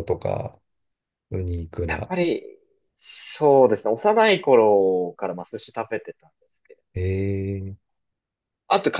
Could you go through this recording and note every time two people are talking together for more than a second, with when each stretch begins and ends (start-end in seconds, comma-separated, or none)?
none